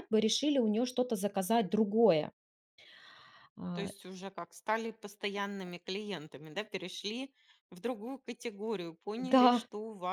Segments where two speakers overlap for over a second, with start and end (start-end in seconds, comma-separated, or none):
none